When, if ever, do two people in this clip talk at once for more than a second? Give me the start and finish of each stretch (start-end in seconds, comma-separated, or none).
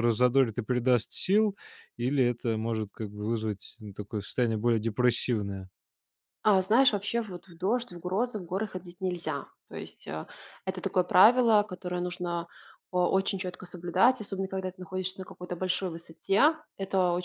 none